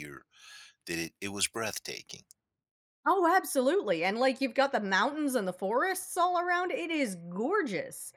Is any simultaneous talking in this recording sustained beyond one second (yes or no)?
no